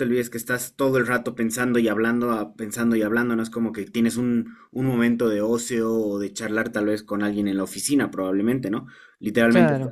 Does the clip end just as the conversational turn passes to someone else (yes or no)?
no